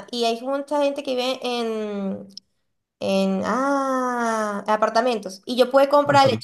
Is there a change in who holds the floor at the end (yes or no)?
no